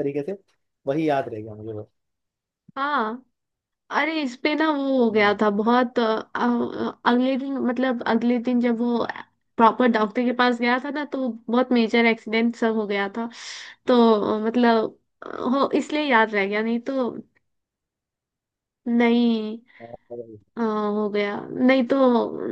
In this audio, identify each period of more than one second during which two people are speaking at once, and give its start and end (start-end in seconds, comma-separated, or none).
none